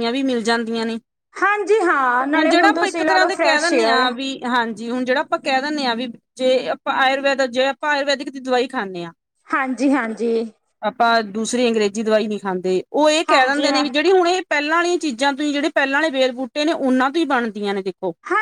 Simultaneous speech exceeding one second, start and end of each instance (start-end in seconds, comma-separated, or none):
2.4-4.0